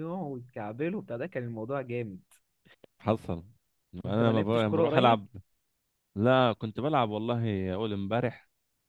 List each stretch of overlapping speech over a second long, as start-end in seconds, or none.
4.0-5.3